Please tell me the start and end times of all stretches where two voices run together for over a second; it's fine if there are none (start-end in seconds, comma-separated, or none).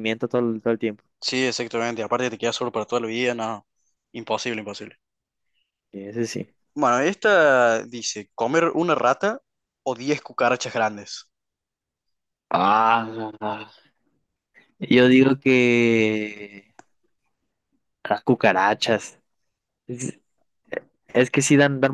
none